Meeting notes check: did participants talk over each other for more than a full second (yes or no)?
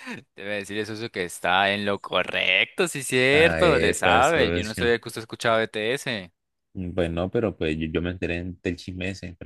yes